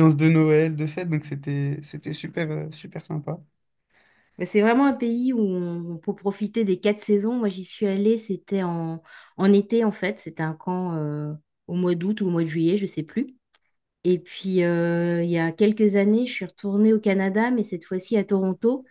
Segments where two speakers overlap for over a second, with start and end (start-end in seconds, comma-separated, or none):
none